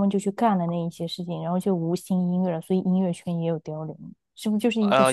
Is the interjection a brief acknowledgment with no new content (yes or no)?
no